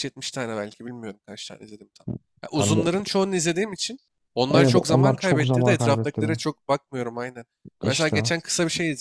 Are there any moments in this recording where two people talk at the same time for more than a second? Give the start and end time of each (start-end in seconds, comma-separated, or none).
4.5-6.4